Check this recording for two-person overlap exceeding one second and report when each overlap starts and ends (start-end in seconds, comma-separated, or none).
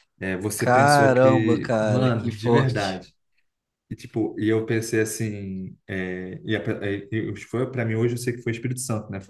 0.6-3.0